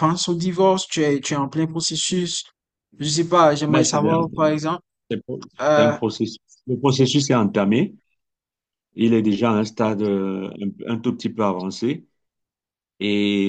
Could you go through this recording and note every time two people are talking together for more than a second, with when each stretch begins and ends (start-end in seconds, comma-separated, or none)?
none